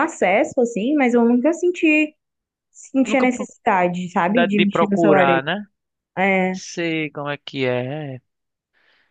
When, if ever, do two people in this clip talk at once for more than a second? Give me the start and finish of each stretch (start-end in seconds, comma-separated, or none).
3.9-5.5